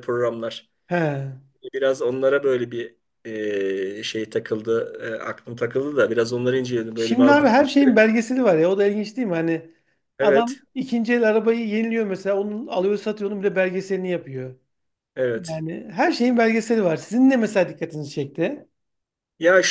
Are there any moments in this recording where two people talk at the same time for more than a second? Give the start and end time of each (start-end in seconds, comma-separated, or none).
none